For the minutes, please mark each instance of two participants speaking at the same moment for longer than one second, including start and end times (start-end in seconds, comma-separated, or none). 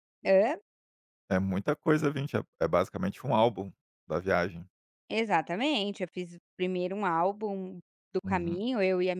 none